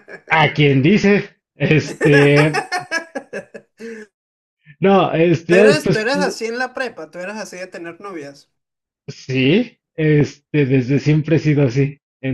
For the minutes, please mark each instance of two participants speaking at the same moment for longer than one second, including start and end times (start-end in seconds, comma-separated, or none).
none